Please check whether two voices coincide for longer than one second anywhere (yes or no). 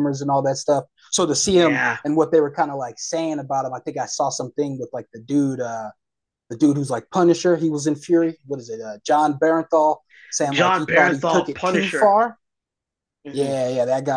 yes